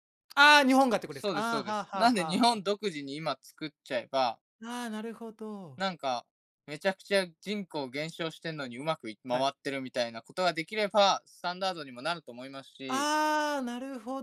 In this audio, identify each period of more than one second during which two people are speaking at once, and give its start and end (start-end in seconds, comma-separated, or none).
1.1-2.6